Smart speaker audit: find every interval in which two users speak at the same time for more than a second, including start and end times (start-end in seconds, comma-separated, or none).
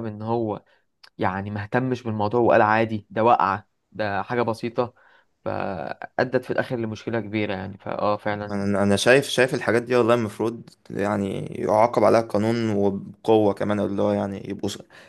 none